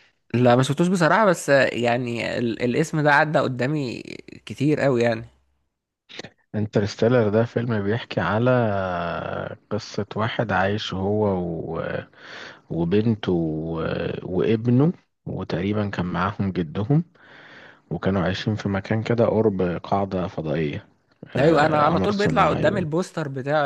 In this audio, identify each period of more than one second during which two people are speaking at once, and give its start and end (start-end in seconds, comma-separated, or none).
21.4-22.9